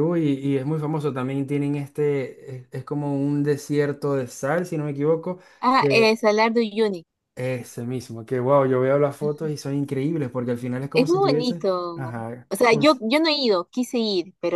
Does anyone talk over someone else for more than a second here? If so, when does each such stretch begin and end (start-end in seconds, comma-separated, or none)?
10.9-13.0